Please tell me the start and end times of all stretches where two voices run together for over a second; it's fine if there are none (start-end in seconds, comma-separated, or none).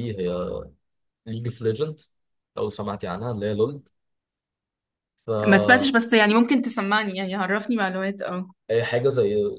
none